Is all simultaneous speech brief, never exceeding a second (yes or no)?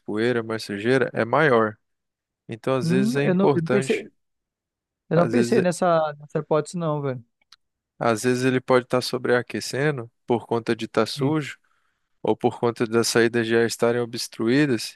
no